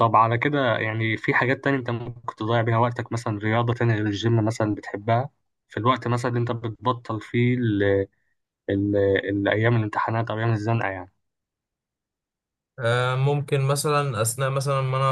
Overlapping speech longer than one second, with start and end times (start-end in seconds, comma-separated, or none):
none